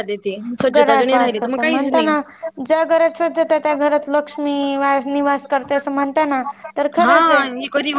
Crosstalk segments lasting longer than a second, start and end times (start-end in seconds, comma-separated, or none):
0.8-2.1